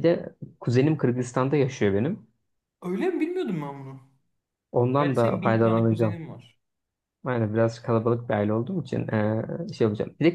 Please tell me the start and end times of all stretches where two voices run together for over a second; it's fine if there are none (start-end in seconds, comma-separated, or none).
5.0-6.2